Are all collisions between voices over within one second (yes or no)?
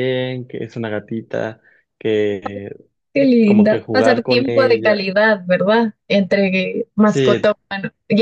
no